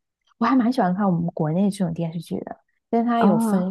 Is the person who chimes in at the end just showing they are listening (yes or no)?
yes